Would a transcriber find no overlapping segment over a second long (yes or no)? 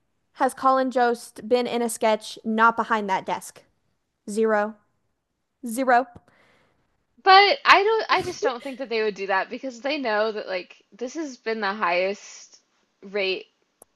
yes